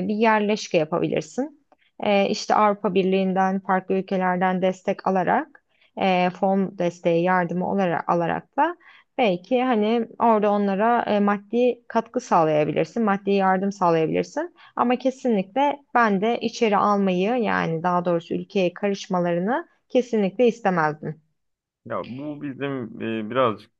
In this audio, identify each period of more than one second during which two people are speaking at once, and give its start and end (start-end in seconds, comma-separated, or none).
none